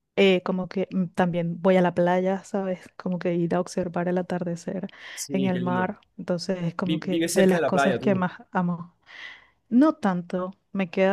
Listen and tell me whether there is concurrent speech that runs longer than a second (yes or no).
yes